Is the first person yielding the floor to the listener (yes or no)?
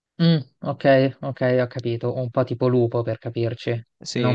yes